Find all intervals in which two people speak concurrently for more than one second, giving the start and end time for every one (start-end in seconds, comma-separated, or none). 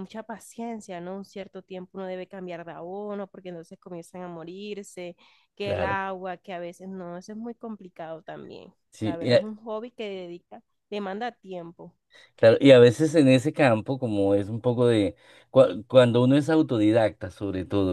none